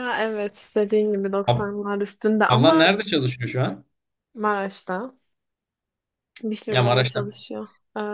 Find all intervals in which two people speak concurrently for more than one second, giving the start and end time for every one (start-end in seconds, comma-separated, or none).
none